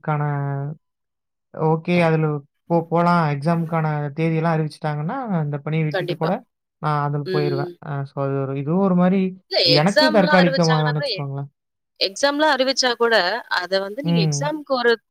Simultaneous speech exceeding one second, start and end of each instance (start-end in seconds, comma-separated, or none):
9.8-11.1